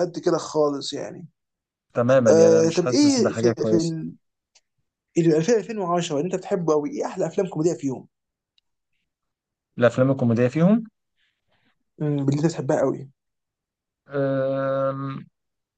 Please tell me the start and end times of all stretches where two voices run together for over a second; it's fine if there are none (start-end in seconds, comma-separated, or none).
2.3-3.8